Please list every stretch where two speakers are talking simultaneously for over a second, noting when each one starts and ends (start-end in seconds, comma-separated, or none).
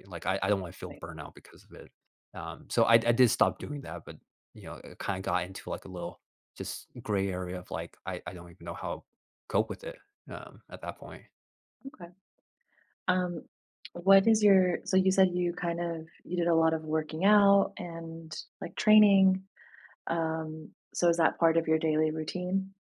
none